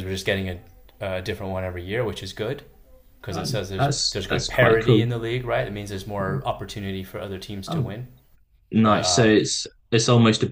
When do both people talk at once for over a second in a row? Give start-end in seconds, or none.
3.3-5.0